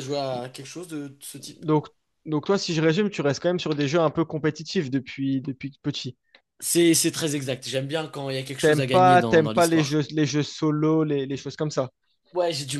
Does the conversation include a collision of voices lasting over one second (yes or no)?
yes